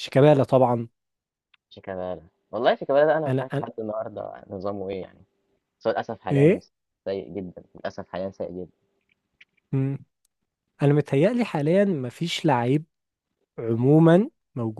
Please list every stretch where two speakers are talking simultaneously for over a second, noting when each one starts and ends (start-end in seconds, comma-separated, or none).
none